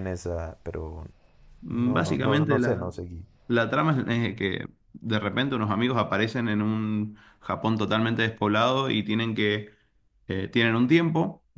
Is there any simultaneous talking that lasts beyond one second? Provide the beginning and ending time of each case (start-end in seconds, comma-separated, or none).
1.7-2.9